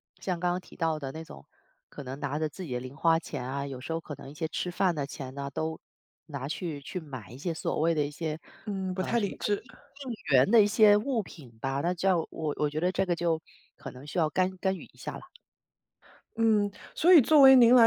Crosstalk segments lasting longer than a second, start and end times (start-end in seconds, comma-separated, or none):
none